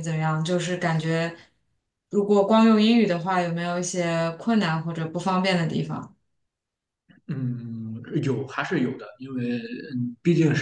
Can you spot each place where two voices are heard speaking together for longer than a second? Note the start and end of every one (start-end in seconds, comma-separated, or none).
none